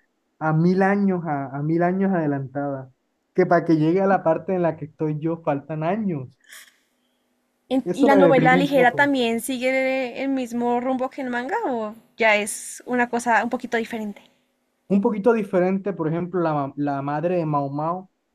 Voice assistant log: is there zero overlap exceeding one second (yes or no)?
no